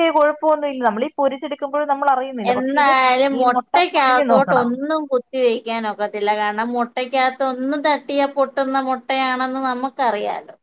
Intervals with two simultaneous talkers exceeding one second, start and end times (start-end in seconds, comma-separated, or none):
none